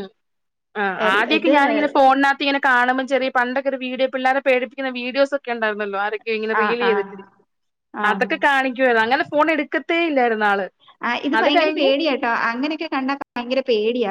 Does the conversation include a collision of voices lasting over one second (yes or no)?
no